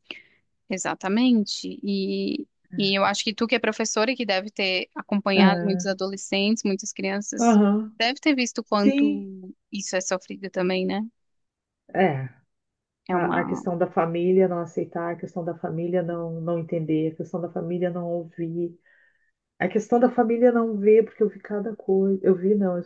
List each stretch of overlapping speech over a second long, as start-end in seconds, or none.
none